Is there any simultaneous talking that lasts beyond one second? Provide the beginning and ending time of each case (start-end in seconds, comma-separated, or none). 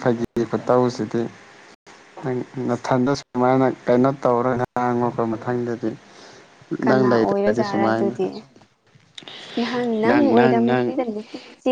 6.8-8.1